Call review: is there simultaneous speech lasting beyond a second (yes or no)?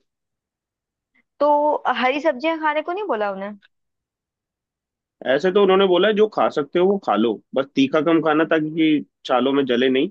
no